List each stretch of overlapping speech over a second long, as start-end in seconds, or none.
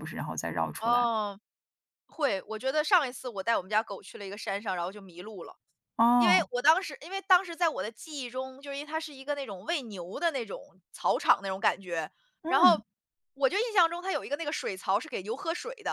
none